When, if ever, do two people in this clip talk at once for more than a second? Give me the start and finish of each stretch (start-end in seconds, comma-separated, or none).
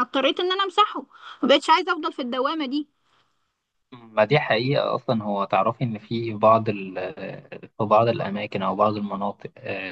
none